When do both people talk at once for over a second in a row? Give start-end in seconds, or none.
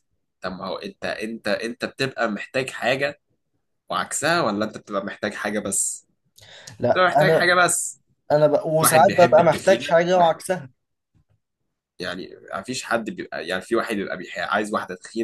8.8-10.3